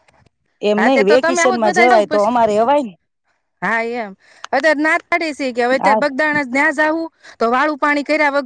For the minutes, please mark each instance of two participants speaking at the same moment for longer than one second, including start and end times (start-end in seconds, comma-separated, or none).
0.8-2.2